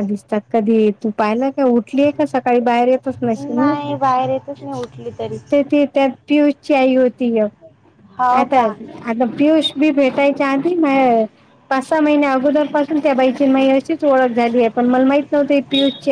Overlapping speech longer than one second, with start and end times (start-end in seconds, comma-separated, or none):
none